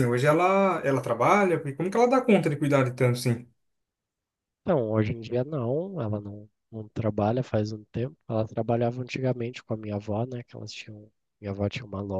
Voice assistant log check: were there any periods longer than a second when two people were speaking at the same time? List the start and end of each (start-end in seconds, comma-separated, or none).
none